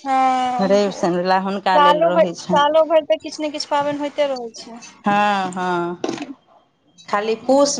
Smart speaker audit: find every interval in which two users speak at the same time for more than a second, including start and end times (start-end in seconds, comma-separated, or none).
0.6-2.6